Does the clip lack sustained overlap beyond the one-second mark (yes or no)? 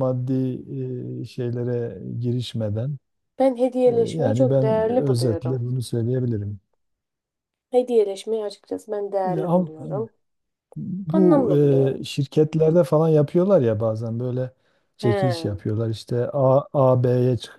no